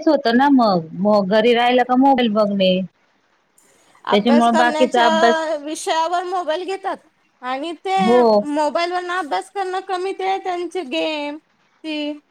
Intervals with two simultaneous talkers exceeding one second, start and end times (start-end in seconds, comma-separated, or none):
4.1-5.4